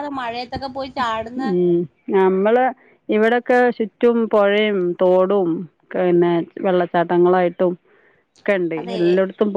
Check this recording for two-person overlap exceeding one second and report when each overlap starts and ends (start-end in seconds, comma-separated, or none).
none